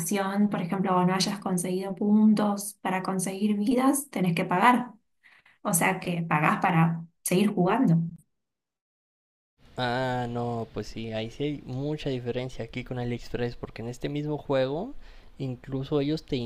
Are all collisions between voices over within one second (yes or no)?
yes